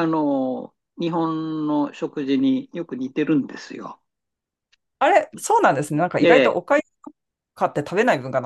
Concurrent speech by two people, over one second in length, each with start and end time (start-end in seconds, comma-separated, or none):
none